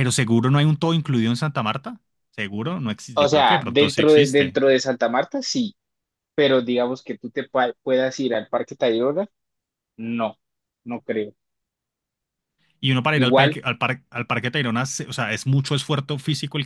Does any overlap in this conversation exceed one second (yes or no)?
yes